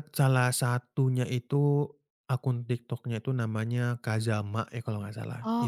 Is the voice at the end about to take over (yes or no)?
no